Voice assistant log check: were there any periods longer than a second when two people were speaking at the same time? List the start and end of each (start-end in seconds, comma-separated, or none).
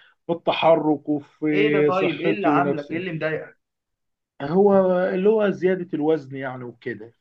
1.5-3.0